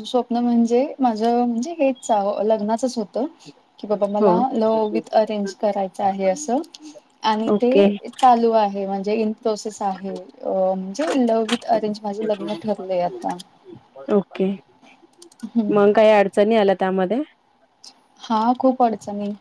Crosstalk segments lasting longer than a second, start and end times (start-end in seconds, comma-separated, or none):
none